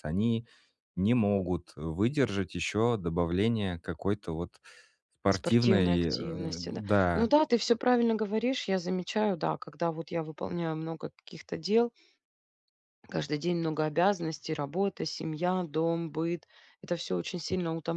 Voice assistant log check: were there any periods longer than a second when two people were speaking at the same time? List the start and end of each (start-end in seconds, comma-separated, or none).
5.3-7.3